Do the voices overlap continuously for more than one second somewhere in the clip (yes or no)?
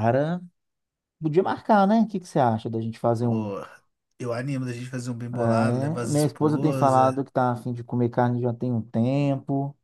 yes